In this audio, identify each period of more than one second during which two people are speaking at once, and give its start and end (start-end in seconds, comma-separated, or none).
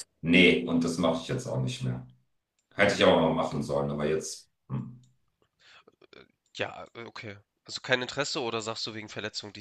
none